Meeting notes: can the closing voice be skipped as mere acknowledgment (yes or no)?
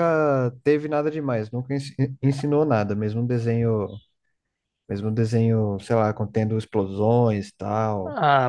no